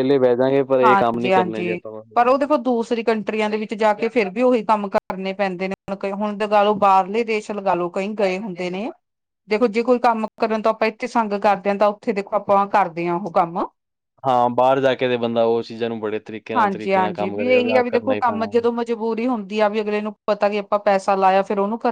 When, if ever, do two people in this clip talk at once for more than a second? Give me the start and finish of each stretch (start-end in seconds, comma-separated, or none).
0.8-2.4, 16.6-18.4